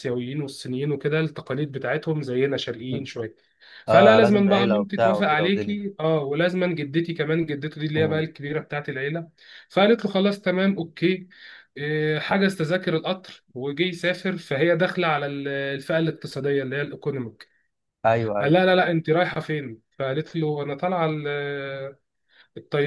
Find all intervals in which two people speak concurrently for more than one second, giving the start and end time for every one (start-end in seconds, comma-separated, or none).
3.9-5.8